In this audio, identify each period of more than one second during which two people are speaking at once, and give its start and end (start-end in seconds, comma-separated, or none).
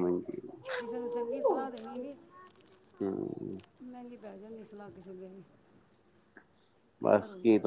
none